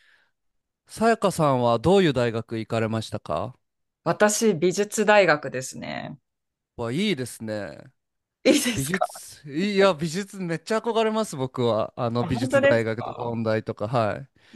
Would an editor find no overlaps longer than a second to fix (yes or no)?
no